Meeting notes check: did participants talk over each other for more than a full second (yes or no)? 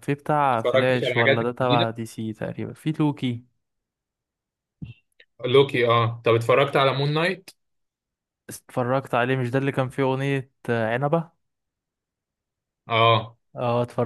yes